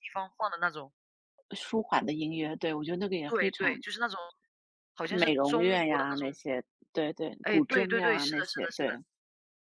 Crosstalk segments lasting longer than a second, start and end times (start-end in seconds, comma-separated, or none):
5.1-6.4, 7.4-9.0